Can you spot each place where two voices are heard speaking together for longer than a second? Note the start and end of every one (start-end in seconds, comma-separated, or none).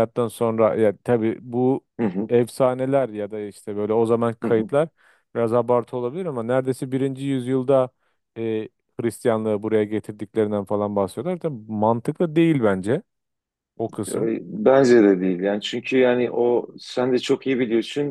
none